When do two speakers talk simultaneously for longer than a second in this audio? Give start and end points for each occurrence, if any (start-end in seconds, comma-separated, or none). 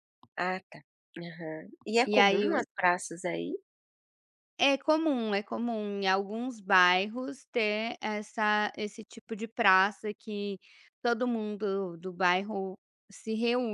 none